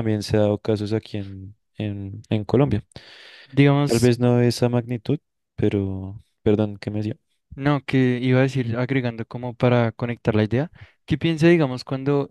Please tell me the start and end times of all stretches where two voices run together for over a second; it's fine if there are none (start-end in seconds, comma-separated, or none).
none